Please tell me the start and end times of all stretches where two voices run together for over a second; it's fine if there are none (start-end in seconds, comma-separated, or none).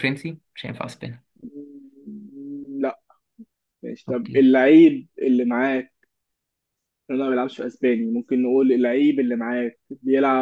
none